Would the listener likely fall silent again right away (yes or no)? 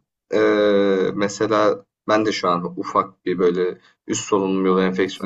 yes